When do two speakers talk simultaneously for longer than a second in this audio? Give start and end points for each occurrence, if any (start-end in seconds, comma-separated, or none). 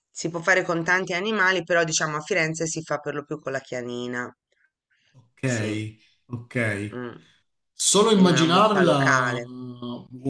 8.1-9.4